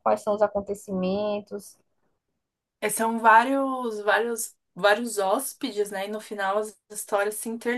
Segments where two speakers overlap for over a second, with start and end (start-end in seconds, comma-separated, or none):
none